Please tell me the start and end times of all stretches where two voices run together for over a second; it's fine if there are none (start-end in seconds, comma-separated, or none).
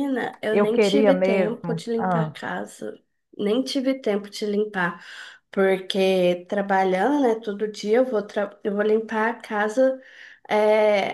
0.5-2.3